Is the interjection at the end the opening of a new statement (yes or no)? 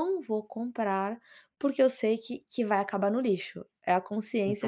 yes